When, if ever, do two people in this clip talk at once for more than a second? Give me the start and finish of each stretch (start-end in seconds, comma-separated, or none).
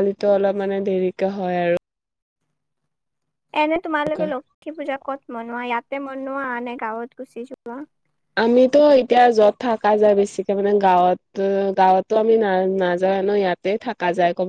none